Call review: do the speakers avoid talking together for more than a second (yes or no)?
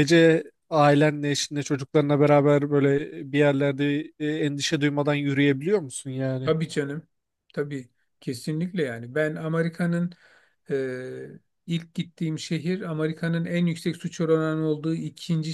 yes